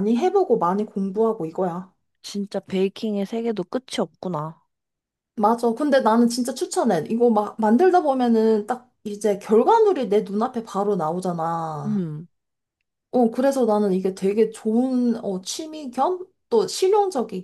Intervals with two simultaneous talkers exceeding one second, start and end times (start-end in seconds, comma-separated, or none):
none